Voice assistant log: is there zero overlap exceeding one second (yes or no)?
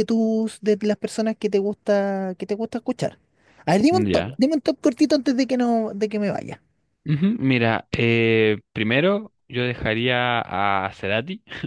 yes